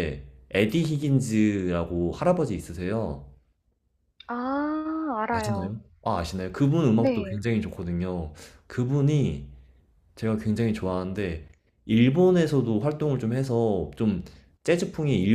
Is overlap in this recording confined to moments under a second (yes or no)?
yes